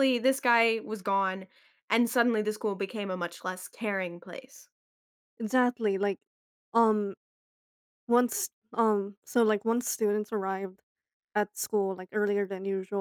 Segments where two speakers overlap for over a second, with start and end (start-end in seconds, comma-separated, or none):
none